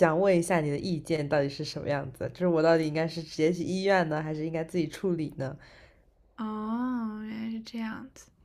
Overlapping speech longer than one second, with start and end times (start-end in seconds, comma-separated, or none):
none